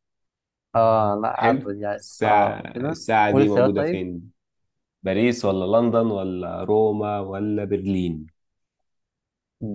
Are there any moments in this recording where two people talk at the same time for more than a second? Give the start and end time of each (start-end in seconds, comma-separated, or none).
1.3-4.0